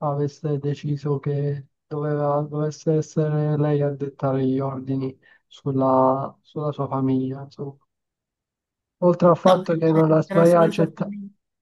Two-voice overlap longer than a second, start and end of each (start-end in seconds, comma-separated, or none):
9.4-11.1